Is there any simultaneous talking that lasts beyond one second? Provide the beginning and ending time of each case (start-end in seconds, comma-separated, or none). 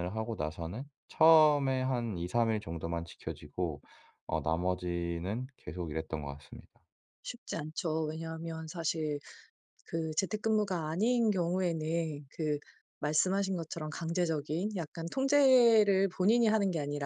none